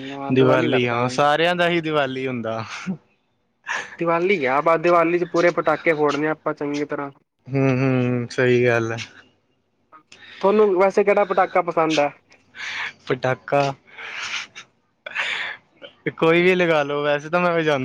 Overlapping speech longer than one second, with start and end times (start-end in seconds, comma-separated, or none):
none